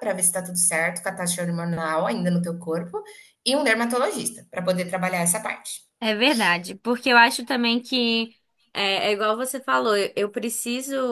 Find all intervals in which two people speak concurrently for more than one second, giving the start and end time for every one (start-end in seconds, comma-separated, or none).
none